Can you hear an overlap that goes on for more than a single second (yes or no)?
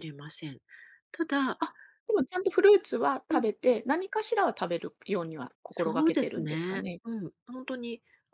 yes